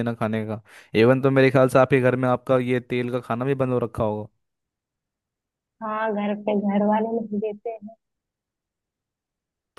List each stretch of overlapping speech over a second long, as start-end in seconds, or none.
none